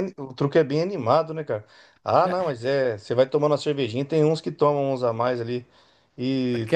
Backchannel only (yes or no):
yes